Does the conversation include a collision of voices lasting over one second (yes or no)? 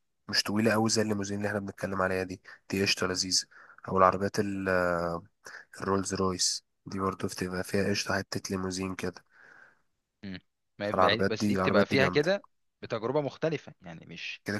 yes